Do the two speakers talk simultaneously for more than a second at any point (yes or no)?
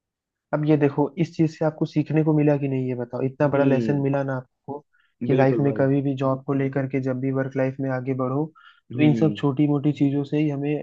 no